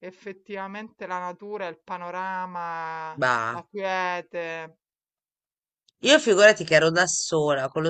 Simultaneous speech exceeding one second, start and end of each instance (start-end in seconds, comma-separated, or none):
none